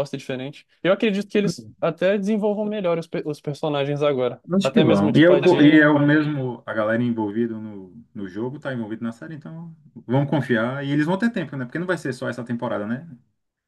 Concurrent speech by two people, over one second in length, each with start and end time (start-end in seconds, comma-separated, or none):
4.5-6.0